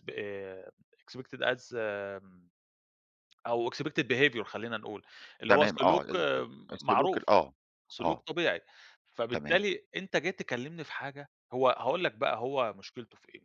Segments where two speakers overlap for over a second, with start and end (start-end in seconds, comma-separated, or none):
5.5-7.3